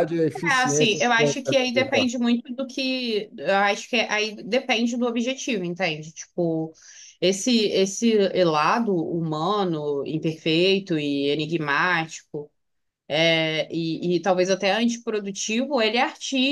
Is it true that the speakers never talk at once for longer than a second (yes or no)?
no